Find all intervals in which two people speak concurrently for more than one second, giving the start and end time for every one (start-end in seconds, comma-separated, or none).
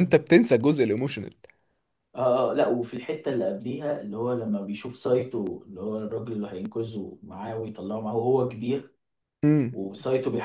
none